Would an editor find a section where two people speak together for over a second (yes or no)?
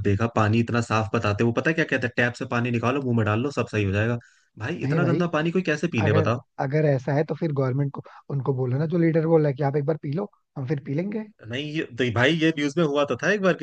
no